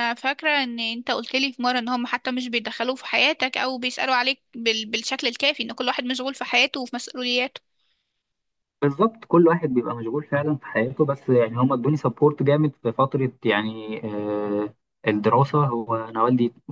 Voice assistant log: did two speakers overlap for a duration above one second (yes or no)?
no